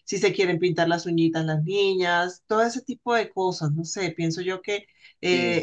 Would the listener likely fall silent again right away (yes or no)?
yes